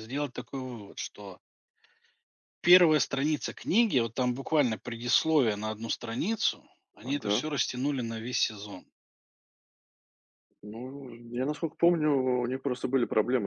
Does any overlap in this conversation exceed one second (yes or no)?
no